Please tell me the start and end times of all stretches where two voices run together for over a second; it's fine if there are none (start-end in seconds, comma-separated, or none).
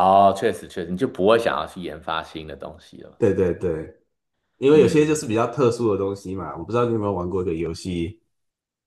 none